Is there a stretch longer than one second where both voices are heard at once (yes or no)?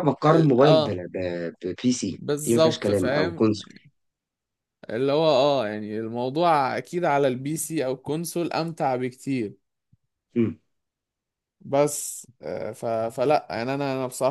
yes